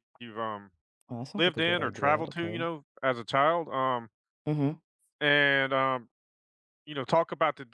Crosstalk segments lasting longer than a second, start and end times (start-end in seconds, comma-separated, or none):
1.4-2.7